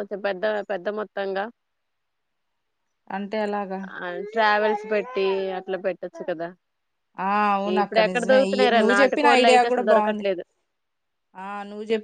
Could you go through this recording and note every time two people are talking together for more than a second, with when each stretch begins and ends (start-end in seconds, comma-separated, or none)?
7.8-10.2